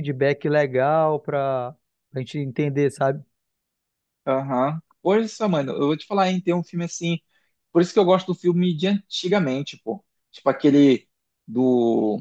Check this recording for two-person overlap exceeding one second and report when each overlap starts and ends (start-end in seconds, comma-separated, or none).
none